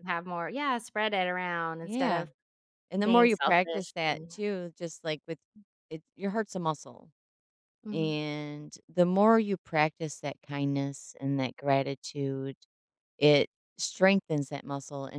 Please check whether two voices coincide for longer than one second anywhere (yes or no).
yes